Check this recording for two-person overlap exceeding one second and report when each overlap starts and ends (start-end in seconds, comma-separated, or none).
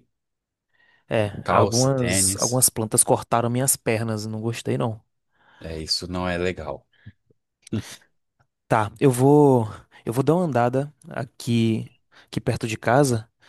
1.4-2.7